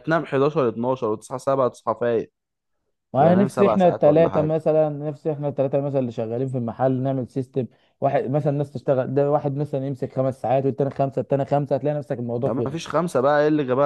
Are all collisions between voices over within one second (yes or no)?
no